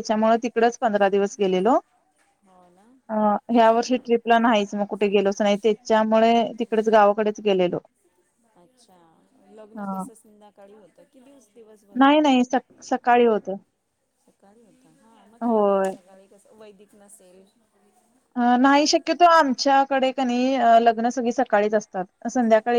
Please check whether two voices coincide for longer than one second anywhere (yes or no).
no